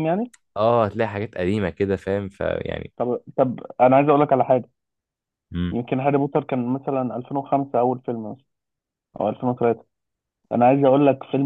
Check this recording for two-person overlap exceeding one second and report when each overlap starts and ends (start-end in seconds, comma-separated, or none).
none